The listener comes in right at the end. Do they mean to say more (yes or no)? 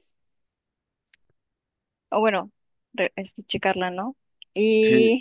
yes